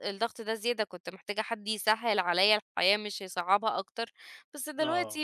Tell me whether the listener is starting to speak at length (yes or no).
no